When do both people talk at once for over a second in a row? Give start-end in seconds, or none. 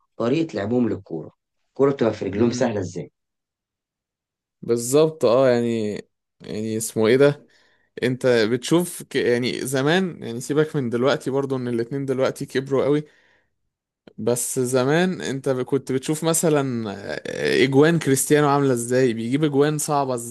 none